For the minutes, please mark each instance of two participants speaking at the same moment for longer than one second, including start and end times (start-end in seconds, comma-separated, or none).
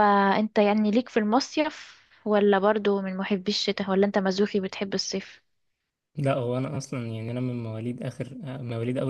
none